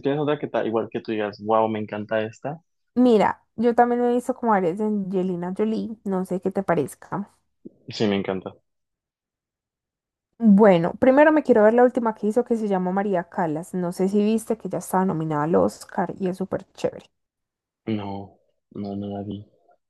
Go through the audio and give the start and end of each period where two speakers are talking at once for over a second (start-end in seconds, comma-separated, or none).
none